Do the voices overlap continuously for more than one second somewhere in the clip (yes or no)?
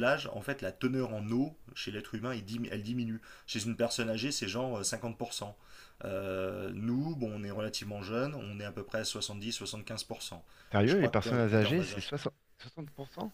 yes